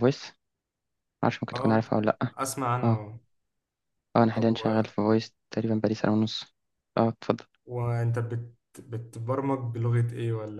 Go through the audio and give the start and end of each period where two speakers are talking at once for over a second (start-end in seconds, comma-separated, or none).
none